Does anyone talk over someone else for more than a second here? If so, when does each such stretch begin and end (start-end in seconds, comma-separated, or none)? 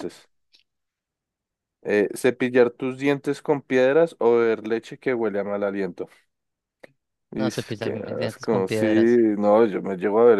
7.3-9.2